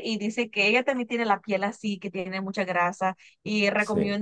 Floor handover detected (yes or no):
no